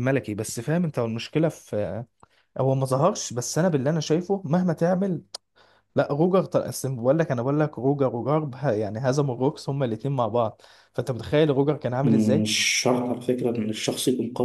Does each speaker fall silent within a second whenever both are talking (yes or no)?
yes